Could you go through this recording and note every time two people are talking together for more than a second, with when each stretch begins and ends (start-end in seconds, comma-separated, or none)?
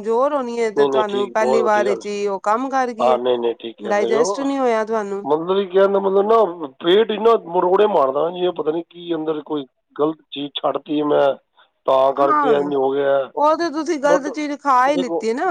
0.8-2.0